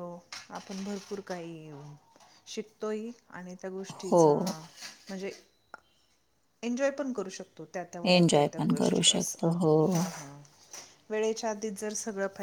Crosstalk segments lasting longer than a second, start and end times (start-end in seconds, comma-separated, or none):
8.2-10.0